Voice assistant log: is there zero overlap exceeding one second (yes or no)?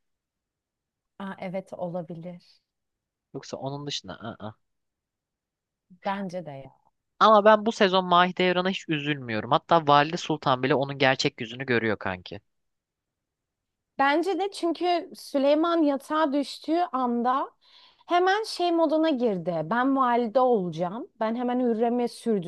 yes